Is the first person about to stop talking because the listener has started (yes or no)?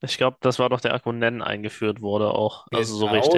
yes